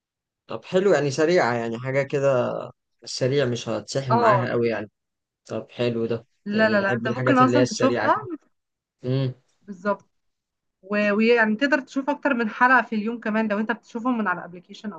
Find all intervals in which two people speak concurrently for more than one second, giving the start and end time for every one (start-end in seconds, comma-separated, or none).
6.5-8.2